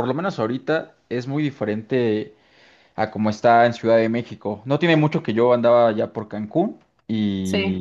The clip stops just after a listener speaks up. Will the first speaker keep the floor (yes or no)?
yes